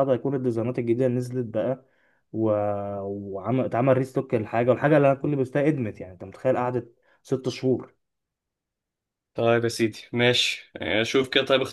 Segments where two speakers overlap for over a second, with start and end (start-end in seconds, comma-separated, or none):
none